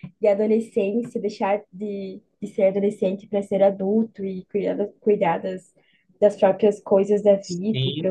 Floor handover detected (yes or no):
yes